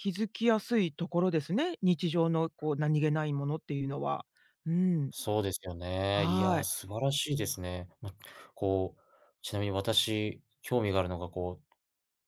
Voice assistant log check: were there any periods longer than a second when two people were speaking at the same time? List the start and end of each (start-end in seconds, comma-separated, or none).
none